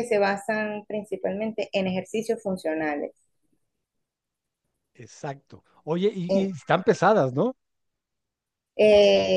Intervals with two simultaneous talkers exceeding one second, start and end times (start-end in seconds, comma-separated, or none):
none